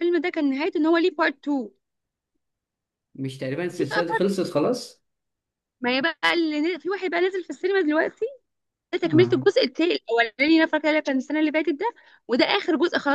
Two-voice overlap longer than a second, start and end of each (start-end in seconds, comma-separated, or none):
none